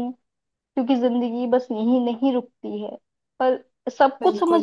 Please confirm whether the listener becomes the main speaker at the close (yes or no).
yes